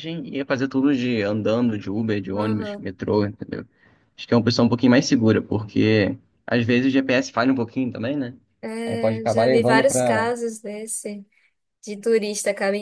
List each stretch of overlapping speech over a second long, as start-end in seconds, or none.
8.9-10.3